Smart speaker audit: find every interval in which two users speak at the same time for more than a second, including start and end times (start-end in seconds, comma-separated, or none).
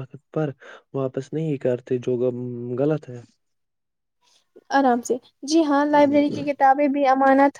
none